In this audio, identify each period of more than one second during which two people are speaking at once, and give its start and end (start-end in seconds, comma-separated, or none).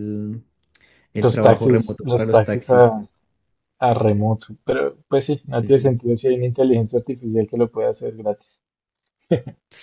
1.1-3.1